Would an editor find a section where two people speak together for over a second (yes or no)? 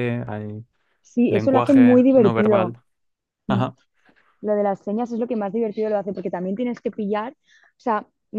yes